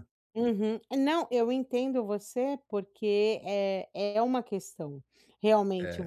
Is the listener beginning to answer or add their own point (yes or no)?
no